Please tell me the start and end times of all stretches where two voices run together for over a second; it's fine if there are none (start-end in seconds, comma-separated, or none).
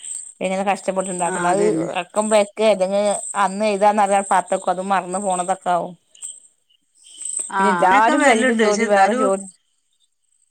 7.6-9.2